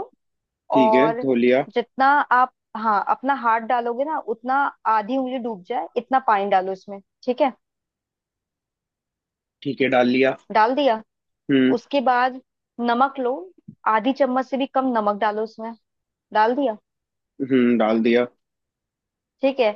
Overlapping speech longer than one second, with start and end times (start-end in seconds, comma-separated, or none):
none